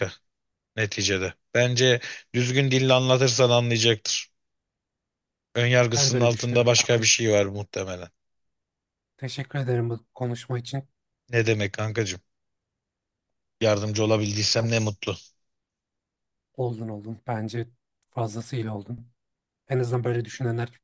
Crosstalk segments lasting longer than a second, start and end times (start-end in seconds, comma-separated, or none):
6.0-7.2